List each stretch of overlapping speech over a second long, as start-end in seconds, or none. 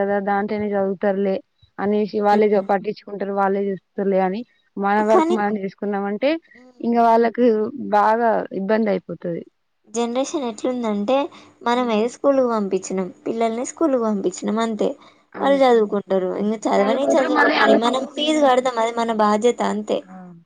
16.8-18.6